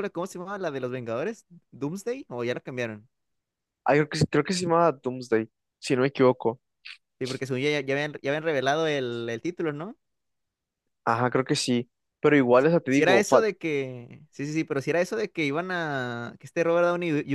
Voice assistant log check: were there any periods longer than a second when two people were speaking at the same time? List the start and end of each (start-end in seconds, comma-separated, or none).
none